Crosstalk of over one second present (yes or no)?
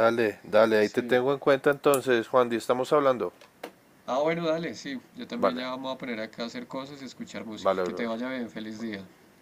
no